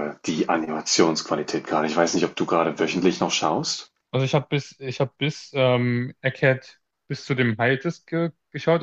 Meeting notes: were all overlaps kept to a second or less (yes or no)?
yes